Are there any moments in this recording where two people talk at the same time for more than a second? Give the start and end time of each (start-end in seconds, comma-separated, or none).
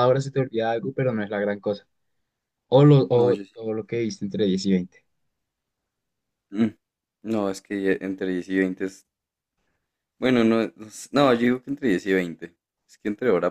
none